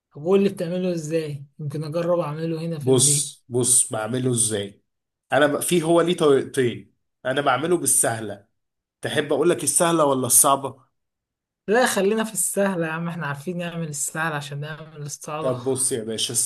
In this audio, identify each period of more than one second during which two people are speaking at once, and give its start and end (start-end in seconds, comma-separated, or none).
none